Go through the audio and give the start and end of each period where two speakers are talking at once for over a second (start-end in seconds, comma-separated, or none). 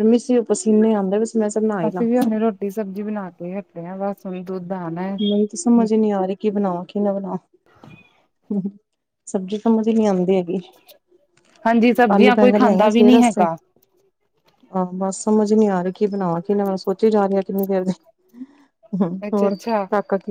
12.1-13.5